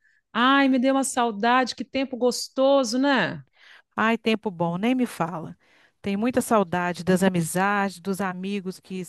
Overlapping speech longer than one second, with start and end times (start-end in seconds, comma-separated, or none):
none